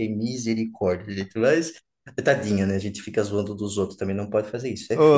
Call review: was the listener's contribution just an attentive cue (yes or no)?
no